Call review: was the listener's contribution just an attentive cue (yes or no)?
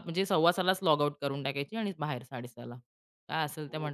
yes